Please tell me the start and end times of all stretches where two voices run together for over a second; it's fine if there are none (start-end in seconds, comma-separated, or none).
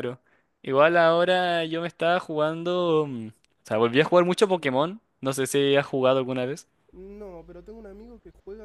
none